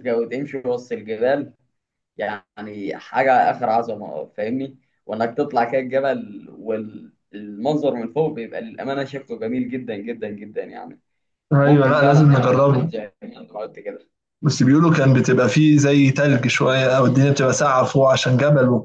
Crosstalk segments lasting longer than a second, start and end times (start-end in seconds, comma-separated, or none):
11.6-12.9